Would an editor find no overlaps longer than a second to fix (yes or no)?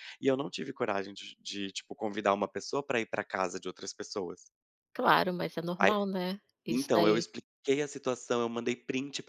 yes